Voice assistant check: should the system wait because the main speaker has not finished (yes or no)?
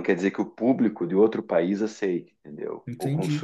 no